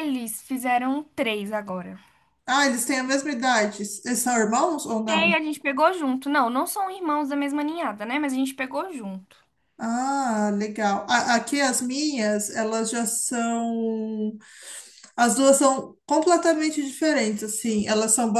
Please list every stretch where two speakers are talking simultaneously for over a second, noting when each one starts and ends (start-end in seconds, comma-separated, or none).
none